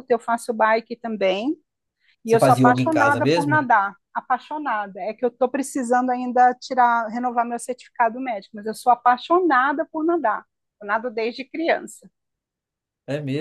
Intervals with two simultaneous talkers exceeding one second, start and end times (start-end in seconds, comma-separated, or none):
2.2-3.7